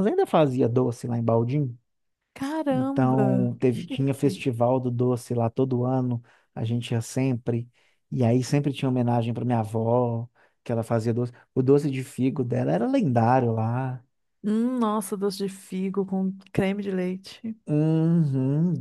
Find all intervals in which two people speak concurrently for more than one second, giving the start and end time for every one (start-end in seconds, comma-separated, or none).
2.7-4.4